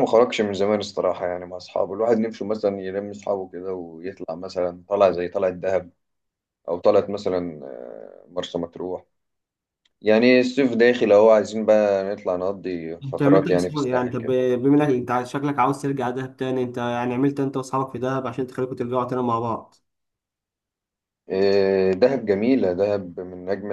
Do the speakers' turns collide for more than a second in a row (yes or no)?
yes